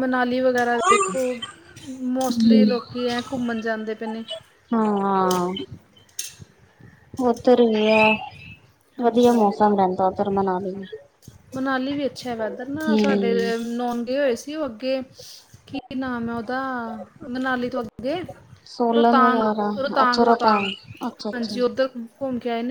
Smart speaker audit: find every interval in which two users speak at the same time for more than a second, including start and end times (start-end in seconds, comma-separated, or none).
18.9-20.7